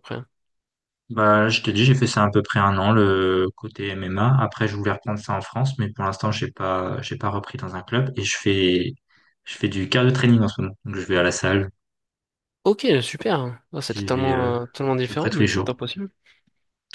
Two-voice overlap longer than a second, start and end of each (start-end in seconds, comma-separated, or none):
13.8-15.7